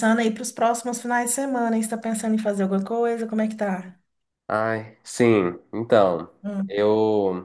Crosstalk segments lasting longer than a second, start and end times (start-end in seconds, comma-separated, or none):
none